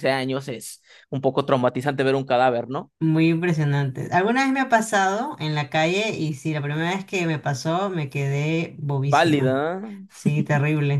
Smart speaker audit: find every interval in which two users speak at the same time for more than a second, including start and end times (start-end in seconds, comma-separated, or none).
none